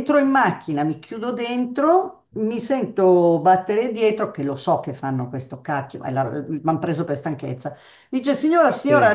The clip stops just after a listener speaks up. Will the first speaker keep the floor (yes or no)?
yes